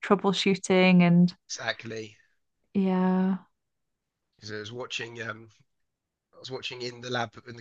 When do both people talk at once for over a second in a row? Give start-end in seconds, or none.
none